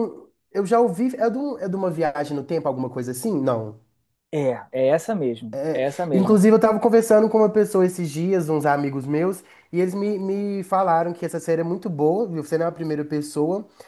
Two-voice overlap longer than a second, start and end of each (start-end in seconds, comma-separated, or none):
none